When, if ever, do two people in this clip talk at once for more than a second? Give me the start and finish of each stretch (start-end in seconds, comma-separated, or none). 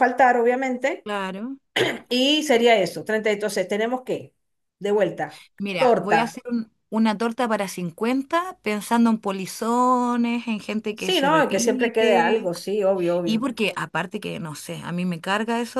10.9-12.6